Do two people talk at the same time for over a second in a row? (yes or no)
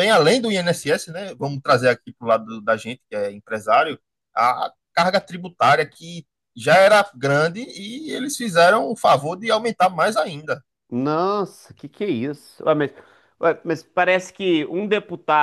no